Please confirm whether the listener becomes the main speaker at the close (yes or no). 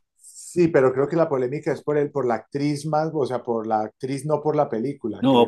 yes